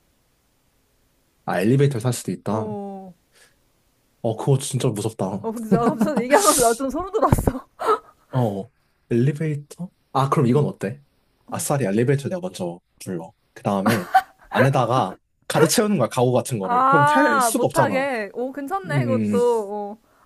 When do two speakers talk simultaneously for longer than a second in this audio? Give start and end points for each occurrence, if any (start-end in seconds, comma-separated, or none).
16.6-18.1